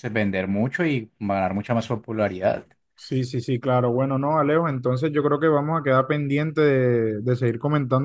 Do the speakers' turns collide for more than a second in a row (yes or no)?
no